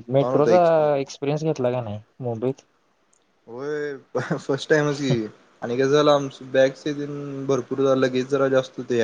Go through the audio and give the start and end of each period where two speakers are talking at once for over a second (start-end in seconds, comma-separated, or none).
none